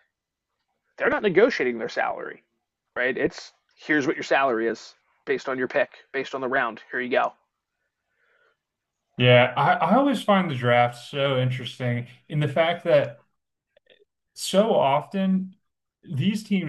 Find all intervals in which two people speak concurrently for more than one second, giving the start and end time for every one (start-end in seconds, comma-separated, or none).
none